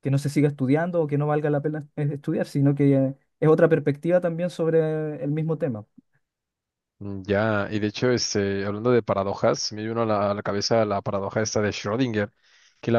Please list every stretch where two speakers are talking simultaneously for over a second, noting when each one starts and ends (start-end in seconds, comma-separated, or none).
none